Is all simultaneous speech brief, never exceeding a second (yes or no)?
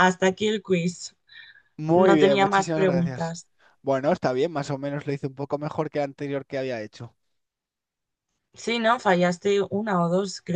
no